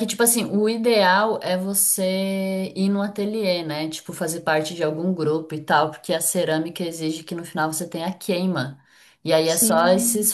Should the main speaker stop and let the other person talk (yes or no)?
no